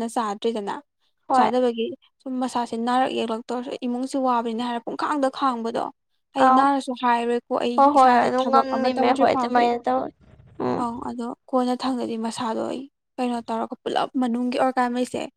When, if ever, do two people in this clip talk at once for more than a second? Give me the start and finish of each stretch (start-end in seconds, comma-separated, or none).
7.8-9.7